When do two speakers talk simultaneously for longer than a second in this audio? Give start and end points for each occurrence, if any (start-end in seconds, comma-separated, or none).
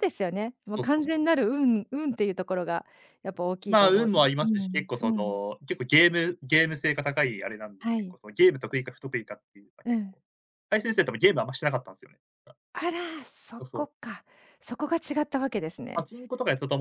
3.7-5.4